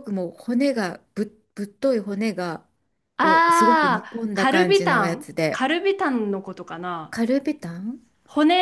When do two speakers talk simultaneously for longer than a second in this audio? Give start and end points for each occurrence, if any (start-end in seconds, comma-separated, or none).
3.2-5.7